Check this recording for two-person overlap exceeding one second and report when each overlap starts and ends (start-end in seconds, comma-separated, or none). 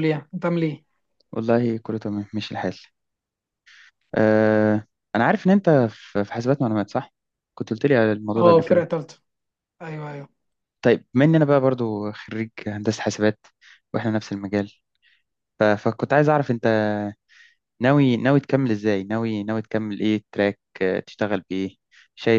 none